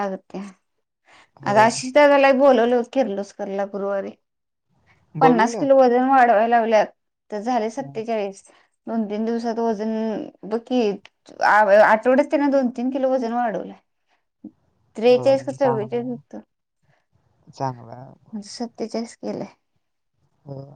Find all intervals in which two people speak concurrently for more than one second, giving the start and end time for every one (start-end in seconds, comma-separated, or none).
15.0-16.3